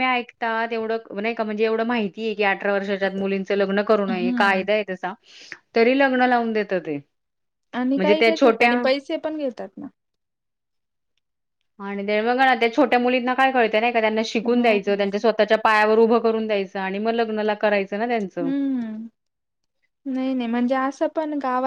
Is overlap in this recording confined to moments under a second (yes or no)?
yes